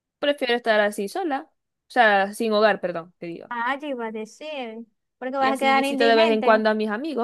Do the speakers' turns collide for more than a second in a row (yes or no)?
yes